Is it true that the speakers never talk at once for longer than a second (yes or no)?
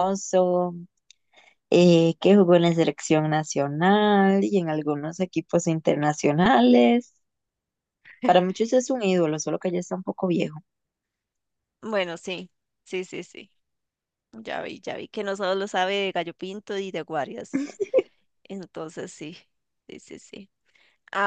yes